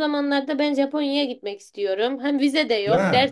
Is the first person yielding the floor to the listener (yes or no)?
no